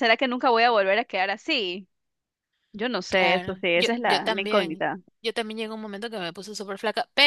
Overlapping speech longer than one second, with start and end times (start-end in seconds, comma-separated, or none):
3.1-4.8